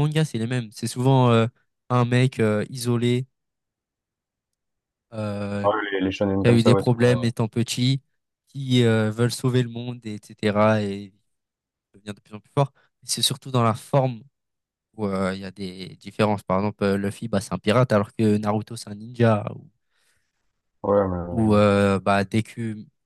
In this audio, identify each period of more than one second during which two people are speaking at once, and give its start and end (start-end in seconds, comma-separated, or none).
5.6-7.3